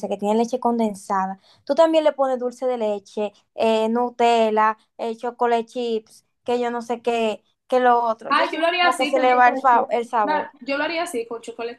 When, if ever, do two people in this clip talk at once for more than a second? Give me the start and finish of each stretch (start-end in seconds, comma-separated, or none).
8.3-10.5